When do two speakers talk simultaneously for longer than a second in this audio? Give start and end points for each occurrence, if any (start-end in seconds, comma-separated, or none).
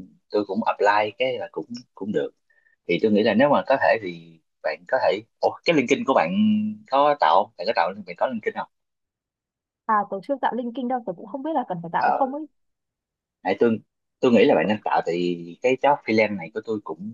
none